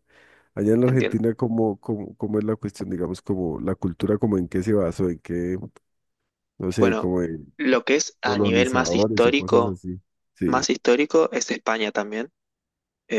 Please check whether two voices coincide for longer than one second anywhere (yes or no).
yes